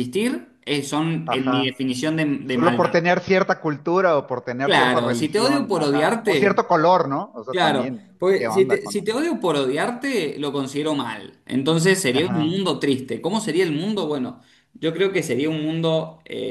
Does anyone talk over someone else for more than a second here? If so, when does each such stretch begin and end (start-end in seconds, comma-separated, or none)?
4.6-6.6, 7.5-9.0